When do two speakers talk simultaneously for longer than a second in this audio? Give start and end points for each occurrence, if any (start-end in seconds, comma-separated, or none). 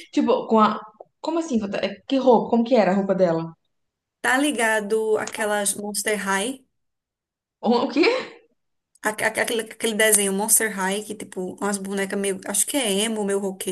none